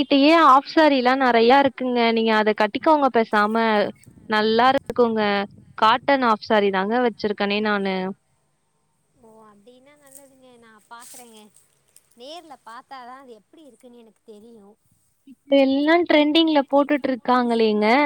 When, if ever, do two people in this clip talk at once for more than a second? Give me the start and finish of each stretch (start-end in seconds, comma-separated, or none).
none